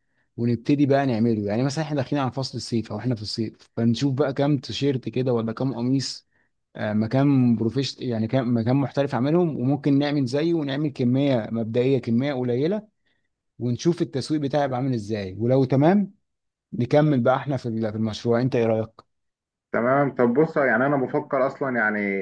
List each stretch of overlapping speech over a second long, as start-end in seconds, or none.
none